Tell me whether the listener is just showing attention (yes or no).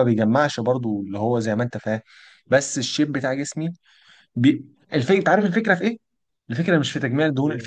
yes